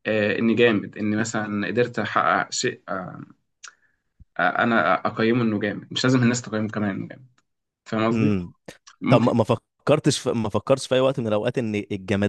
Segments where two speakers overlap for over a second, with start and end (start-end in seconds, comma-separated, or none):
none